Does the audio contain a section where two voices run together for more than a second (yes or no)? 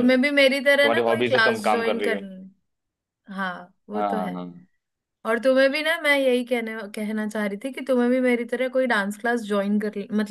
yes